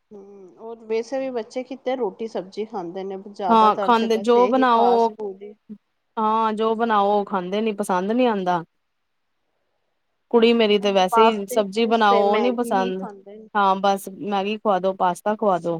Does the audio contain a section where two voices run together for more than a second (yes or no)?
yes